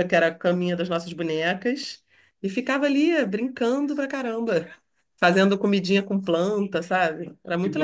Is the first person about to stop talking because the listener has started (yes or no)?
yes